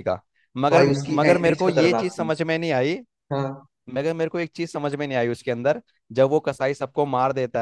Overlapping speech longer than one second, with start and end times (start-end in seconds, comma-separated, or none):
0.7-2.3